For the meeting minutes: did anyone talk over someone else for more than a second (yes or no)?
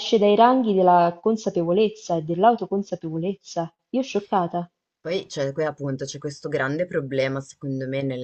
no